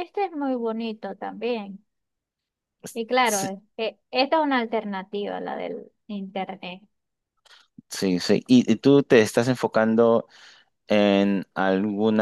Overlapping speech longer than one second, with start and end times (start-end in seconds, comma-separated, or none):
none